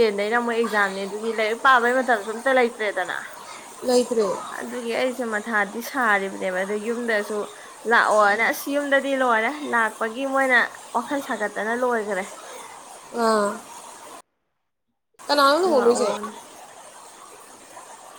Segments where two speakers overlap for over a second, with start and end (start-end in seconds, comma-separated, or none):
none